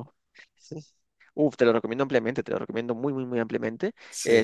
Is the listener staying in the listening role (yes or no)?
yes